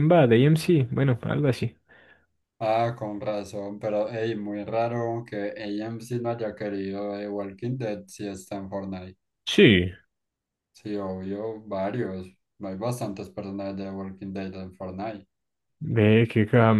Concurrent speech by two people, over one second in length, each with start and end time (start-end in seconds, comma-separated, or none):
none